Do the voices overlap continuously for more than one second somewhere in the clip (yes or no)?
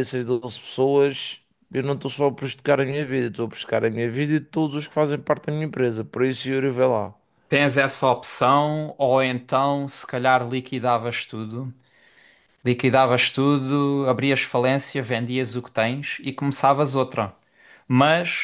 no